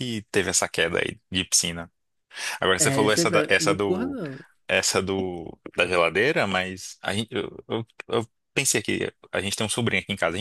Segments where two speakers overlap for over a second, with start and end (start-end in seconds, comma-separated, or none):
2.8-4.2